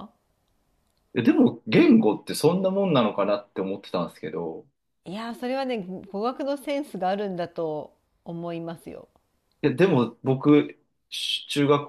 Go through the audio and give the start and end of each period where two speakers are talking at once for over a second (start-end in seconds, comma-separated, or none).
none